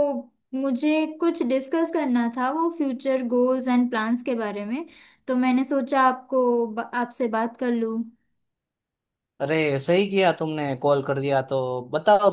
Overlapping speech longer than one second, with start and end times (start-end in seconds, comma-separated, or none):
none